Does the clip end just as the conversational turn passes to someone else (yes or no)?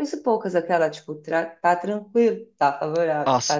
yes